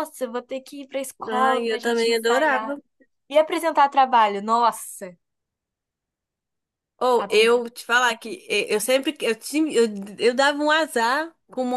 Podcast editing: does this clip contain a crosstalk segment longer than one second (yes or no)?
yes